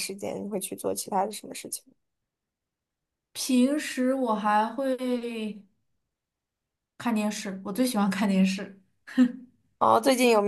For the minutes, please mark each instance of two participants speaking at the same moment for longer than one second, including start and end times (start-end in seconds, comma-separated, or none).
none